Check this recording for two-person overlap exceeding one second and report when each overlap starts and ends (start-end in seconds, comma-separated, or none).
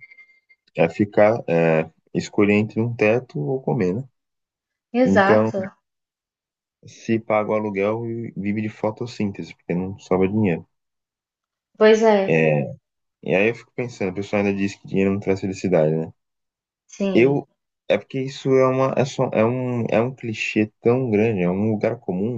none